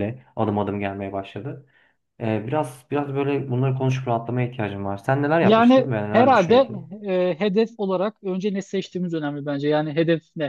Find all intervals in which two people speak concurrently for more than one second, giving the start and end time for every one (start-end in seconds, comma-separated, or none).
5.4-6.7